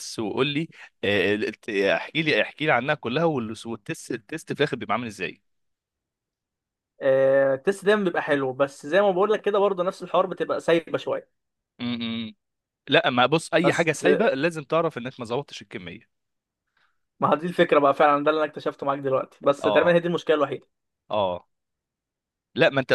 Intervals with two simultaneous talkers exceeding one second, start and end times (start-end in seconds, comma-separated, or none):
none